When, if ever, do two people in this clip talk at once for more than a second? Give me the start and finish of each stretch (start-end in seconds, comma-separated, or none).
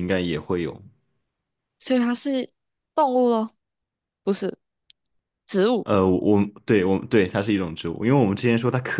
none